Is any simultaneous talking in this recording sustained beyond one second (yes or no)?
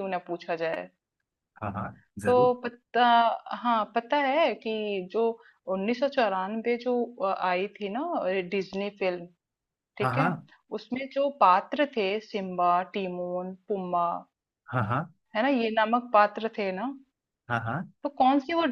no